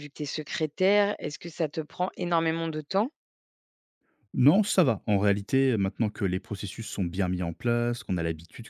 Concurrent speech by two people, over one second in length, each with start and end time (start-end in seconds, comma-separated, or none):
none